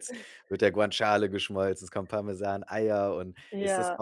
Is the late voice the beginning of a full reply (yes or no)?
no